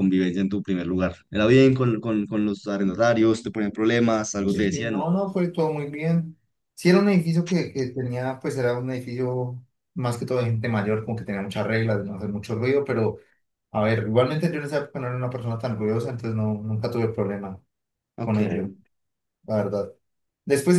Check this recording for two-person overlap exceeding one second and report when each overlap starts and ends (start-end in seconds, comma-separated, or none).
none